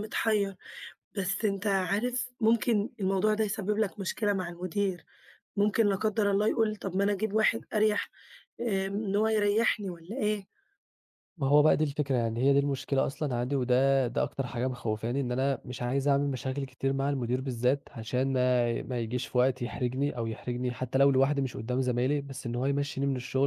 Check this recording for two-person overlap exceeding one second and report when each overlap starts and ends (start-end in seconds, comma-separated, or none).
none